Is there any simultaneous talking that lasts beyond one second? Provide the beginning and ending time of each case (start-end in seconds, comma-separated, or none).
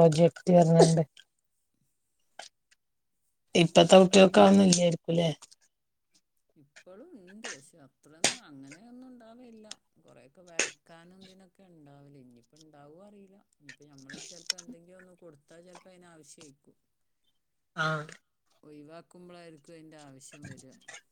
none